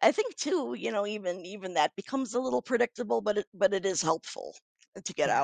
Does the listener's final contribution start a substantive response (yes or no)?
yes